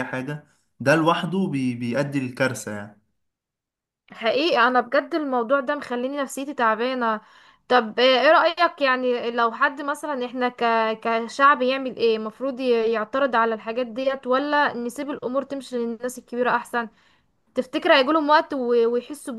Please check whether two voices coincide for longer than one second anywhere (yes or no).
no